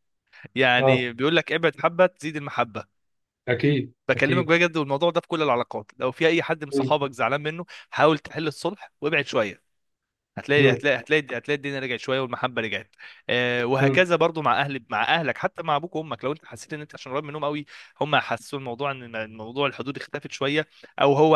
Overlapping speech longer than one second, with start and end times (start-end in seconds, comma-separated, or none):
none